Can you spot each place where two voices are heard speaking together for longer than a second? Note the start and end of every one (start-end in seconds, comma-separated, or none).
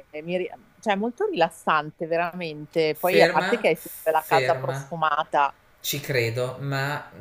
2.9-4.9